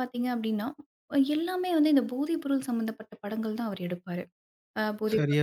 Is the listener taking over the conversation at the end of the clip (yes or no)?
no